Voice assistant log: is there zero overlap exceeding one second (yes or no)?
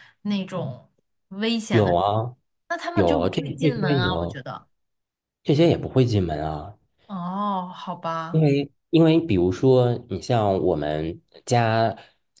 no